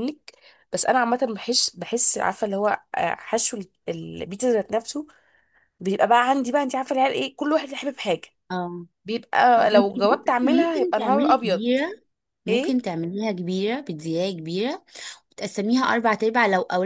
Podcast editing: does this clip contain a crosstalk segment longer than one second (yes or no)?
yes